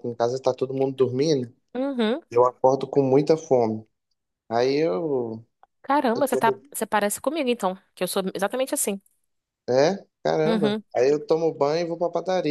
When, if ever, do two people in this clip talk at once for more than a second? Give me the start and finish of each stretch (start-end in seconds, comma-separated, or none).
none